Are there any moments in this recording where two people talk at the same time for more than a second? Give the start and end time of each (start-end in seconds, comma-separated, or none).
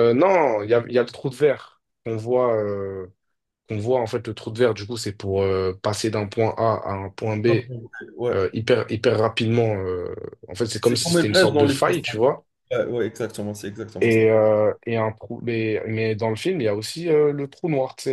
10.8-12.3